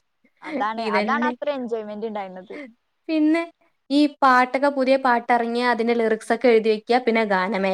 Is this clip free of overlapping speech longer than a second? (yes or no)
yes